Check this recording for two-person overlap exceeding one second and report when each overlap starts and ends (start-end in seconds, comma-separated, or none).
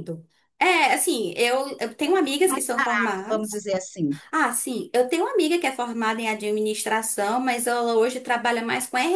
2.4-3.6